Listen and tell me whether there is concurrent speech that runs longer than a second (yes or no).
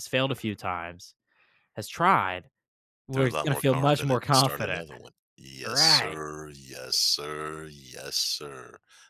yes